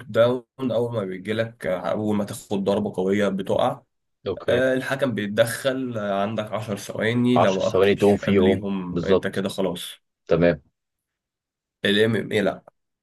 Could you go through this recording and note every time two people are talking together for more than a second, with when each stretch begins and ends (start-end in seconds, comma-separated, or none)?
7.3-9.4